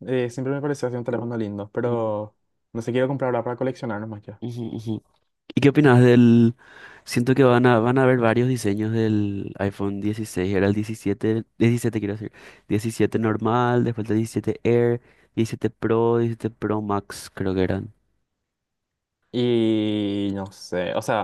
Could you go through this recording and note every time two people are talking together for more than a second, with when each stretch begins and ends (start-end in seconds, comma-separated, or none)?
none